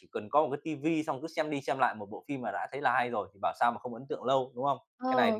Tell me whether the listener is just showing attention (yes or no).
no